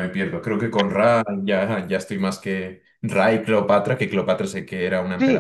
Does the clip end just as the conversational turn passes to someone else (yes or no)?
yes